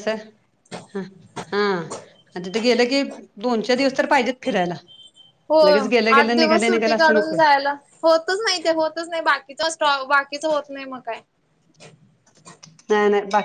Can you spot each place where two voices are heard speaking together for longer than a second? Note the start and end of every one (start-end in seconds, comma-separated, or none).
6.2-7.4